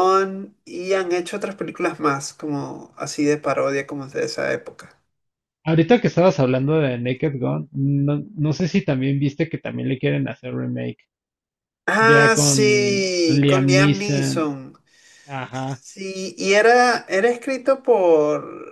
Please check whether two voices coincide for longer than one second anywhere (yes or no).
yes